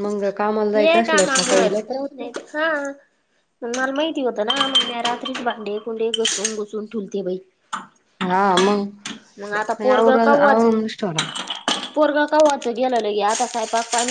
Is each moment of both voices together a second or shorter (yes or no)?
no